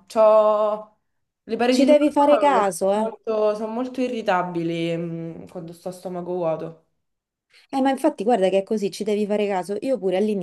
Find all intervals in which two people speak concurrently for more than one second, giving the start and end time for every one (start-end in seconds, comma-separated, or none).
1.7-3.1